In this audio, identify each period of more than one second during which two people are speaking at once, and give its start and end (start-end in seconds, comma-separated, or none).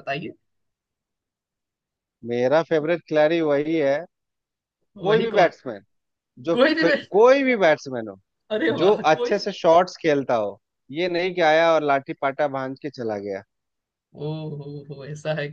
none